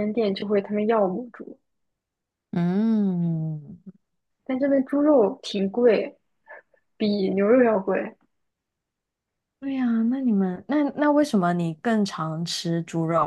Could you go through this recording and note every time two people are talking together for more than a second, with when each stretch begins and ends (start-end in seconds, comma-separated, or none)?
none